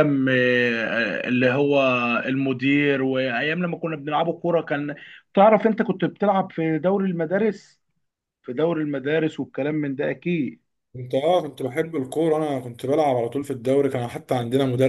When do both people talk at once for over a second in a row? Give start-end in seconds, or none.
none